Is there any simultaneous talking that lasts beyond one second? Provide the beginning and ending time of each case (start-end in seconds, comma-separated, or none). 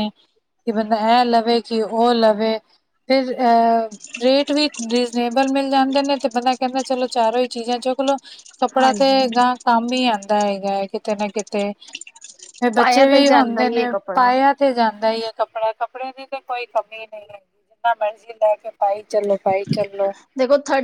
12.8-14.3